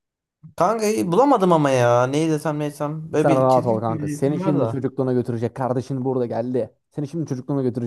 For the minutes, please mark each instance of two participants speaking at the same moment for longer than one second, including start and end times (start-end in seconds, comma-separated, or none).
3.1-4.8